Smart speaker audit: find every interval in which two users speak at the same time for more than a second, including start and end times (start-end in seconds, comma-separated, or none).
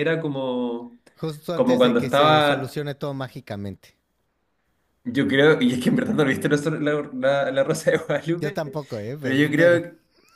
1.5-2.8